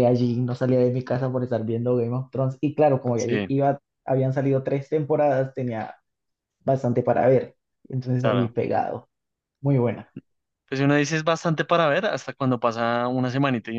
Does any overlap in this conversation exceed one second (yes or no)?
no